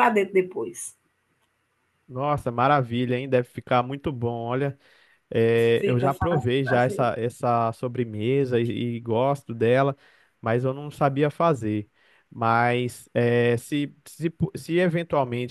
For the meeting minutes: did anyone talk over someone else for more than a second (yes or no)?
yes